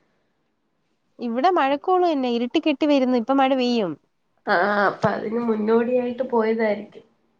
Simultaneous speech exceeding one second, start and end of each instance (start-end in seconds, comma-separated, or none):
none